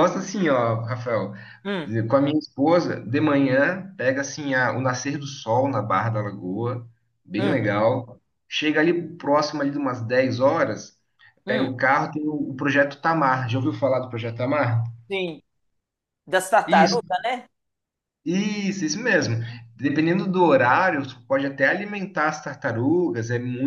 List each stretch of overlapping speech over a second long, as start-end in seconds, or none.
none